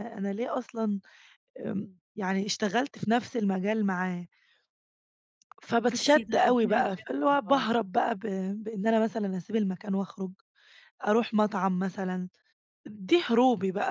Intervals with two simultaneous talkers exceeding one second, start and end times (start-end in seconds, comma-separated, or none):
5.9-7.7